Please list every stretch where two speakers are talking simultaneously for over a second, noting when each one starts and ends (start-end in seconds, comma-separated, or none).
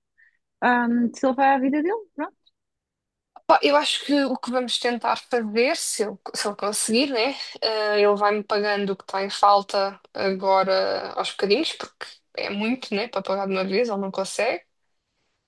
none